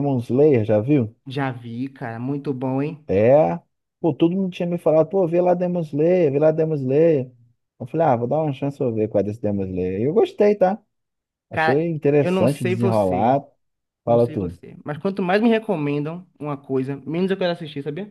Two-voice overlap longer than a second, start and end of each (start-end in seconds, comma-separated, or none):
11.5-13.4